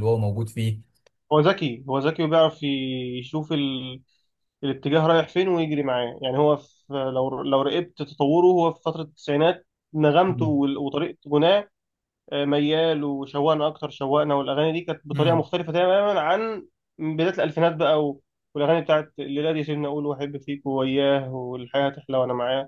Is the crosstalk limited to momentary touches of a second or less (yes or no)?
yes